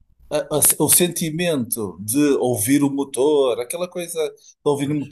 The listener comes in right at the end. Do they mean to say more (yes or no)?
no